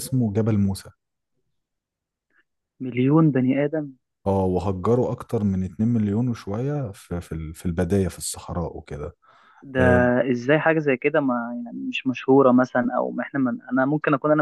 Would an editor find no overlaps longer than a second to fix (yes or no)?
yes